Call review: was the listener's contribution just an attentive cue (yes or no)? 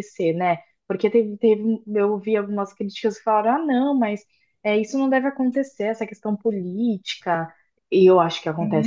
no